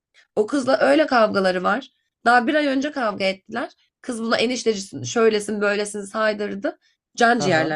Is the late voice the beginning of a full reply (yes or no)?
no